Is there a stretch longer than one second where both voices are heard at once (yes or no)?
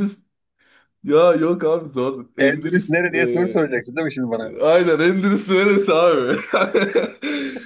yes